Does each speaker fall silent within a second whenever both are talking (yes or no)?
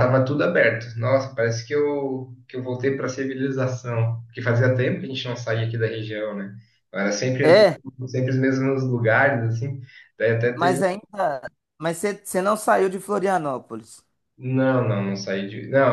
yes